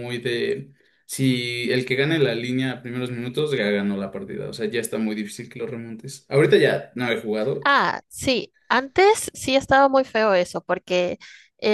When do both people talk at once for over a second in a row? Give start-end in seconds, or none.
none